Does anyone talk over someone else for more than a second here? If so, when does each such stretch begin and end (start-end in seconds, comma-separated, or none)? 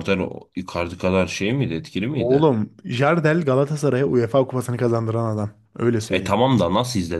none